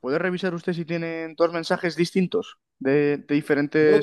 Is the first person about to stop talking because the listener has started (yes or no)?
yes